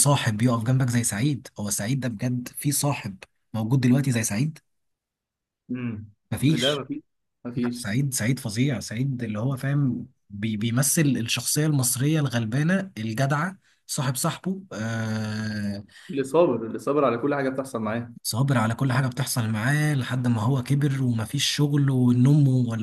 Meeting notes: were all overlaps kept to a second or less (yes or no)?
yes